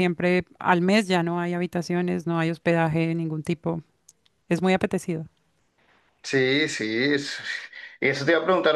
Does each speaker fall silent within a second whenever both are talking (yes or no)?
yes